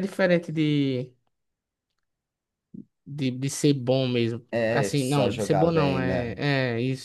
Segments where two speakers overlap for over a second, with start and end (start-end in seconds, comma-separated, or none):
4.5-6.3